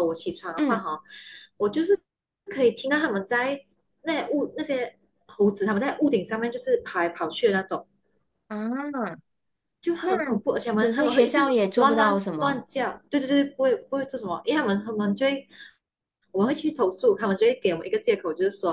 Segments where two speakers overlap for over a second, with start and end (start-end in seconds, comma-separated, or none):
10.8-12.7